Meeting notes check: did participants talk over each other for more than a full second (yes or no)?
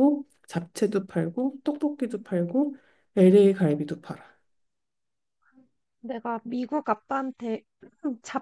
no